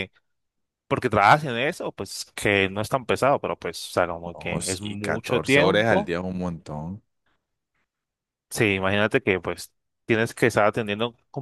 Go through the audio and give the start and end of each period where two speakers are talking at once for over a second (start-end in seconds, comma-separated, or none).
4.3-6.1